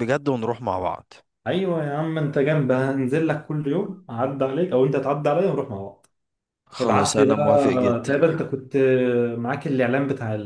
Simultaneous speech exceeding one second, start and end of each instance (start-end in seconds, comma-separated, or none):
6.8-8.1